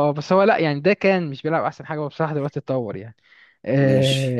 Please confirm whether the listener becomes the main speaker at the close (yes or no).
no